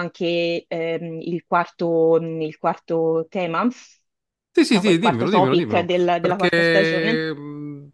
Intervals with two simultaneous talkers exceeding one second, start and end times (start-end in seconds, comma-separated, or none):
4.7-7.2